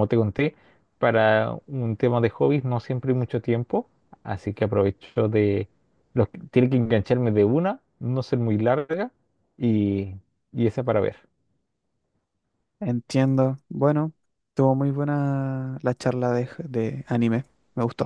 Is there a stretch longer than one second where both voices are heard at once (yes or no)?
no